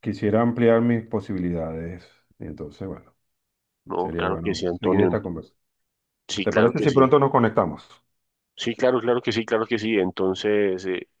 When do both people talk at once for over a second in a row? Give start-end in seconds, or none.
4.0-5.2